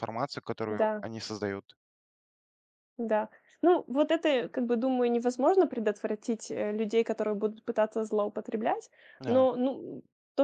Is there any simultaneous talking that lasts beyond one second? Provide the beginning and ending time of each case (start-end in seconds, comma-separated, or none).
none